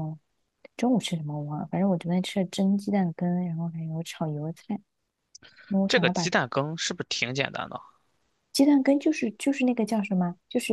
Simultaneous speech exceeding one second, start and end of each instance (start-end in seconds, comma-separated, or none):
none